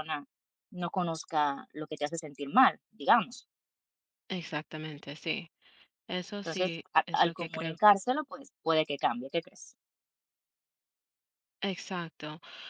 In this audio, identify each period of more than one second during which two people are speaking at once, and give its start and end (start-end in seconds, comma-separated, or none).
6.4-7.8